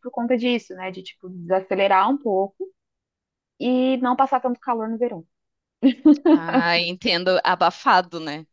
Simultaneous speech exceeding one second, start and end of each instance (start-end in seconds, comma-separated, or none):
none